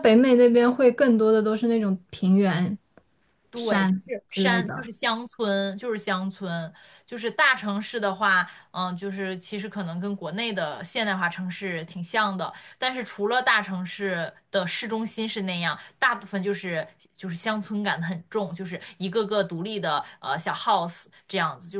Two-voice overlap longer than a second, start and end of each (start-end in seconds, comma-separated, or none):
3.5-4.9